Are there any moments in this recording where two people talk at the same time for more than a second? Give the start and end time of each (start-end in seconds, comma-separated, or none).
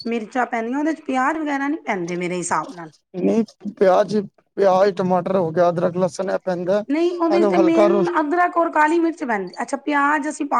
none